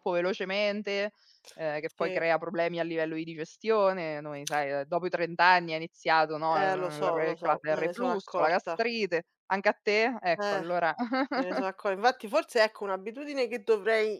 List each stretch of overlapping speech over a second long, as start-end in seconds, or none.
6.5-8.8